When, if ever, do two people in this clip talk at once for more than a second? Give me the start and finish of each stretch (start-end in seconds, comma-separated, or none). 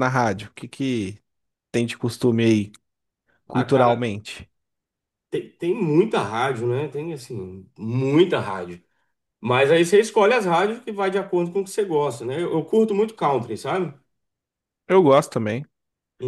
none